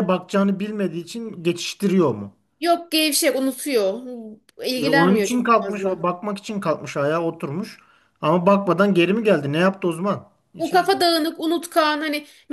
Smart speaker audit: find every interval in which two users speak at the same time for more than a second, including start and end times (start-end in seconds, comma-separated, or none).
4.8-6.0